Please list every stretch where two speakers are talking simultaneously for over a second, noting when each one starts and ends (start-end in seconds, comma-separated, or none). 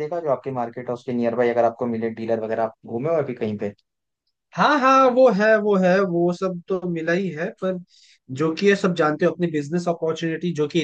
none